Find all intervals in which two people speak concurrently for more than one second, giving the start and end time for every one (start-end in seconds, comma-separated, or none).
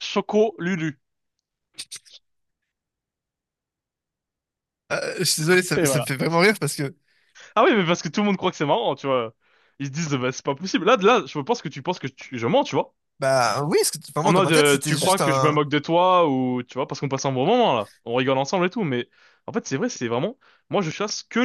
14.2-15.6